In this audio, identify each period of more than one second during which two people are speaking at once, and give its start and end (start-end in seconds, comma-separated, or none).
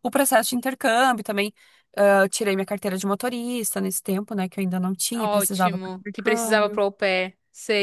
5.1-6.8